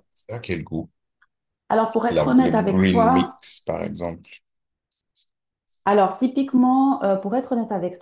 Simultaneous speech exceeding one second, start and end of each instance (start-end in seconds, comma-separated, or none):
2.1-3.4